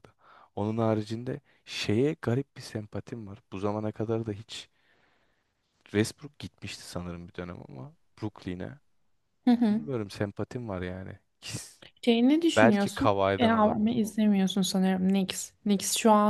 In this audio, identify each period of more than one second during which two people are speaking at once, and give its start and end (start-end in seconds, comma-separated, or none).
12.6-14.0